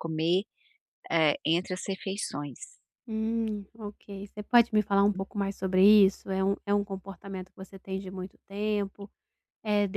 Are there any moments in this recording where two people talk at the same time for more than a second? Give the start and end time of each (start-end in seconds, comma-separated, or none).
none